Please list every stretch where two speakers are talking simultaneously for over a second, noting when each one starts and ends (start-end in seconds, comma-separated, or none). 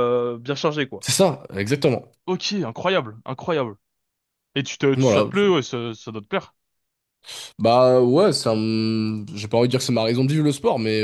none